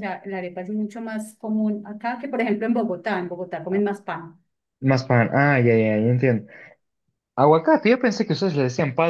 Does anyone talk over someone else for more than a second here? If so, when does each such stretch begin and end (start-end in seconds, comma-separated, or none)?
none